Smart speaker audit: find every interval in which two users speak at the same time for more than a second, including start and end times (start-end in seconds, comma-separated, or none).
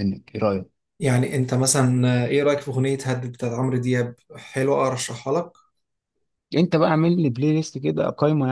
none